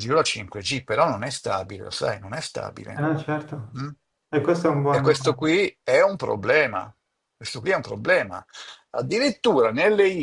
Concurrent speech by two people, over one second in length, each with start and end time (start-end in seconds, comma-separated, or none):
none